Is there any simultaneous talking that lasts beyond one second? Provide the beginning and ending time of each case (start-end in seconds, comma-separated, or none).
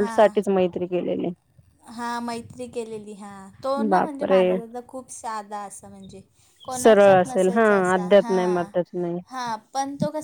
6.8-8.3